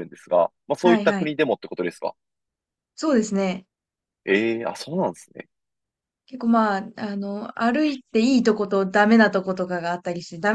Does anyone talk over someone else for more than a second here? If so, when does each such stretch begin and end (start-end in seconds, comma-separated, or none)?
none